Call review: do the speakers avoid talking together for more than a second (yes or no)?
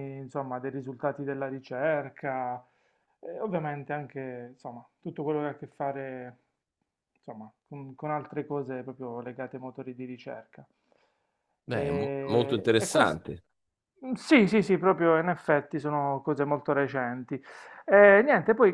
no